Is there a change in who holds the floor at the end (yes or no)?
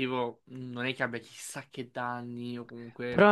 yes